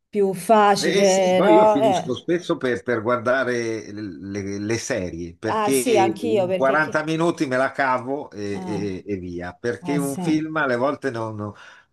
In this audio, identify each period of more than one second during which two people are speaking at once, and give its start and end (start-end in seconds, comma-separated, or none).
0.8-2.1, 5.5-7.1